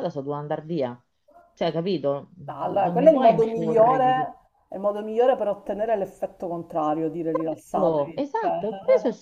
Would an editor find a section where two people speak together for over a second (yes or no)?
yes